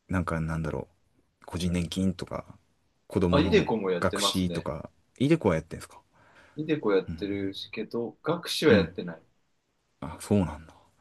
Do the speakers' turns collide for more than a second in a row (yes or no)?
yes